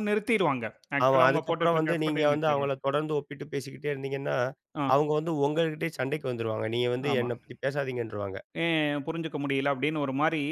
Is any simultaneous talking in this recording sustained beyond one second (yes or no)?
yes